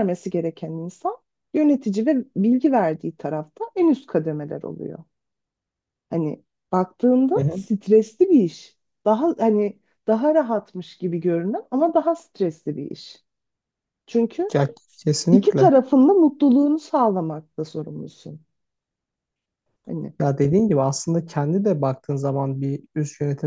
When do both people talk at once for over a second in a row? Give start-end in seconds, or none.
none